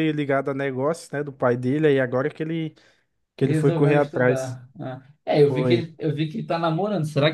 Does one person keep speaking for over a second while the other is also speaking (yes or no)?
yes